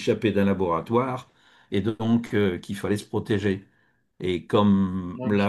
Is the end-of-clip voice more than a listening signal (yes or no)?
no